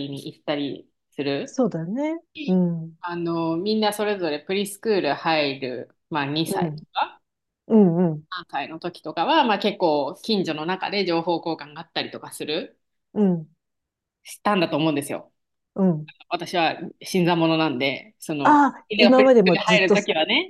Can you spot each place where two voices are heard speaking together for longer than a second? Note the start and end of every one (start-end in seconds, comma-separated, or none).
18.4-20.0